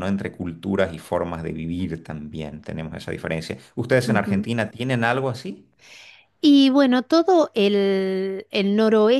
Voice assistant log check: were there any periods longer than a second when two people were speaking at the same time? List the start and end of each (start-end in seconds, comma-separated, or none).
none